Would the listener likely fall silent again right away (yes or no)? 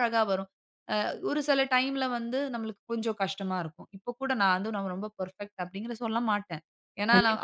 no